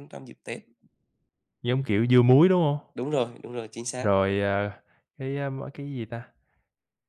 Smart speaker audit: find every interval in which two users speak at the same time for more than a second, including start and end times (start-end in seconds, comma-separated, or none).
none